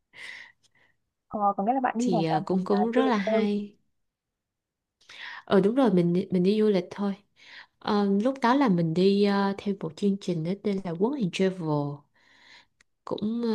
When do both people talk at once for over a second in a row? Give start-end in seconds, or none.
2.0-3.5